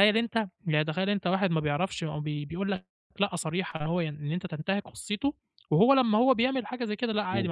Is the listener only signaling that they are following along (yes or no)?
yes